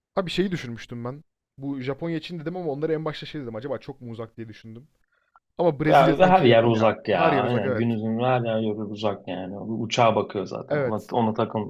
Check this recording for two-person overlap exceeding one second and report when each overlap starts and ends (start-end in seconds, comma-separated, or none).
5.9-7.8